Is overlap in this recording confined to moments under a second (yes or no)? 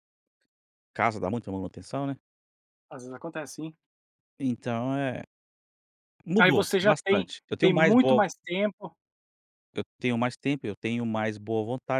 no